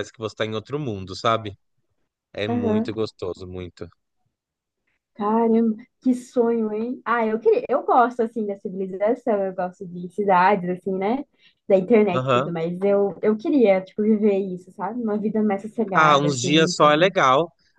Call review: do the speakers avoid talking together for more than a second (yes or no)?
no